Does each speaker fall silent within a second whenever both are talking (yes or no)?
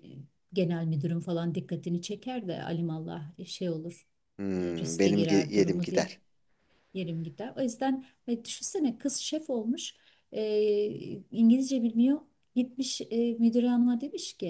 no